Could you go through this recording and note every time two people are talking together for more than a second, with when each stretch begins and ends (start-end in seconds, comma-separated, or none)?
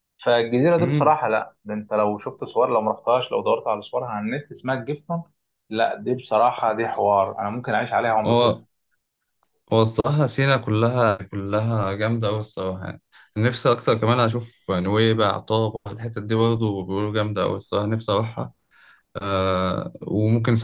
none